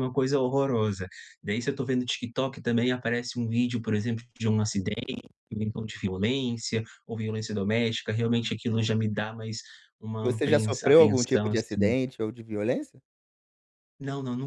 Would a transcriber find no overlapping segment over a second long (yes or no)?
no